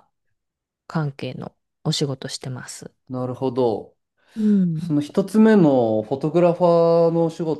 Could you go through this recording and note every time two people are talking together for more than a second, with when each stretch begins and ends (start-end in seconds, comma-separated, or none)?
none